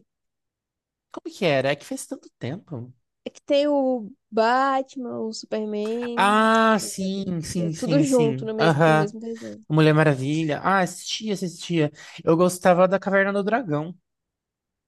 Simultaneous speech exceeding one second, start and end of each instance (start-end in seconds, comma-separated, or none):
6.2-9.1